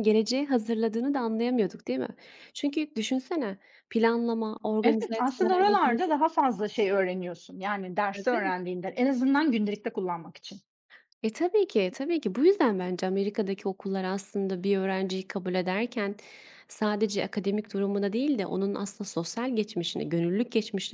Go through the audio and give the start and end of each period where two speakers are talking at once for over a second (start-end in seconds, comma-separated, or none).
4.8-6.0